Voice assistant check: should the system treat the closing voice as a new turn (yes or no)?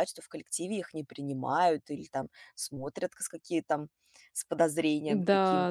yes